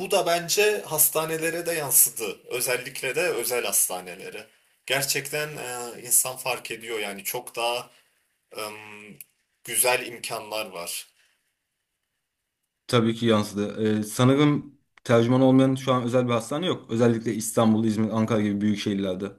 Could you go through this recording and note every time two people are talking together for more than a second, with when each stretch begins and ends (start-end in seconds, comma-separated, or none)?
none